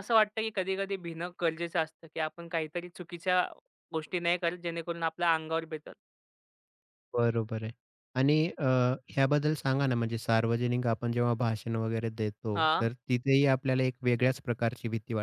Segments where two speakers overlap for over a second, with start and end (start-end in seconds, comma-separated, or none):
none